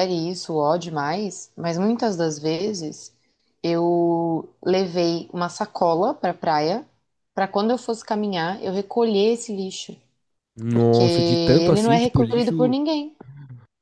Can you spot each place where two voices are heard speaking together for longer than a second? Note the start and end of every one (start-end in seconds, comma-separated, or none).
10.7-12.7